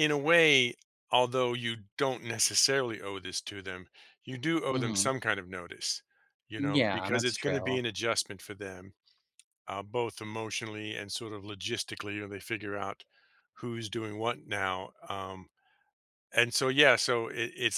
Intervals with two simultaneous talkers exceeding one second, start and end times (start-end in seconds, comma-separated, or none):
6.6-7.8